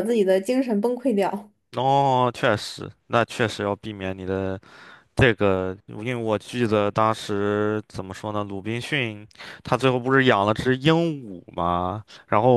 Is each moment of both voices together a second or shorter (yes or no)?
yes